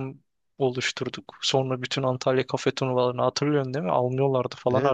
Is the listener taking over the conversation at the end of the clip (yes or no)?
yes